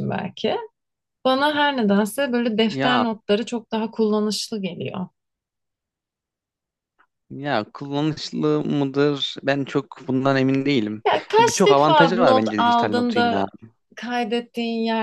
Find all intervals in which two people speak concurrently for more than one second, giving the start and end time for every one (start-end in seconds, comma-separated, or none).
11.4-13.4